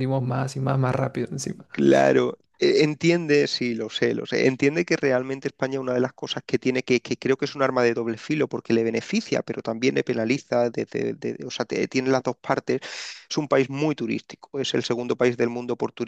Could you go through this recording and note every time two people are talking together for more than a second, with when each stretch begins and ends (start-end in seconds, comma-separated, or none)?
none